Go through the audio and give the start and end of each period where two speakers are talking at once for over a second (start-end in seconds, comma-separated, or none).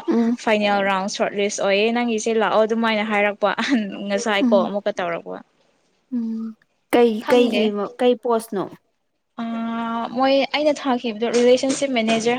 none